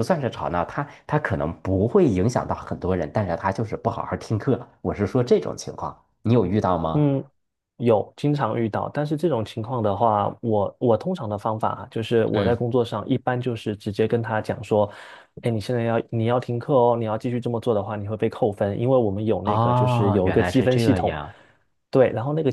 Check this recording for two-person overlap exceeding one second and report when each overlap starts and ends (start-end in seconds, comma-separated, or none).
19.4-21.1